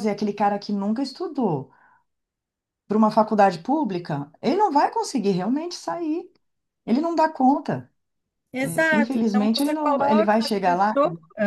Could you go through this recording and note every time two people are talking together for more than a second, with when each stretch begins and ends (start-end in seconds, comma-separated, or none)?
8.6-10.9